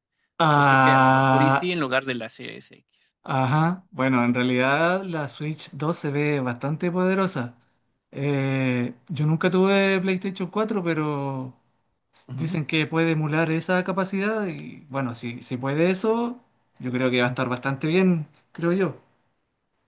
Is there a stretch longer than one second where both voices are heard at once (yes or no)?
yes